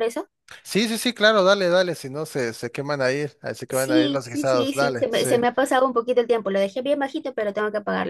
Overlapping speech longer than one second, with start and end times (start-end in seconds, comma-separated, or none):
3.7-5.3